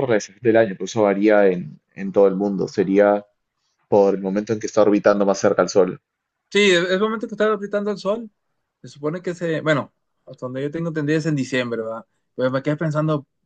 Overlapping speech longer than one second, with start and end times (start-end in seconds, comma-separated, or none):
none